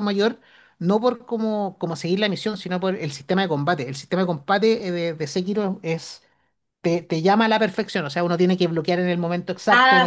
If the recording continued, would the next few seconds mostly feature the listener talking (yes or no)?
no